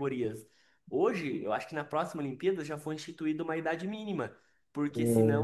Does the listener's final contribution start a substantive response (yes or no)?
no